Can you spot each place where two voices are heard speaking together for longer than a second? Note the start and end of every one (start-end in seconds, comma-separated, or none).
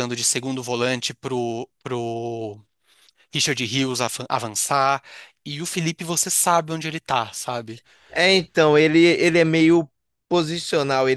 none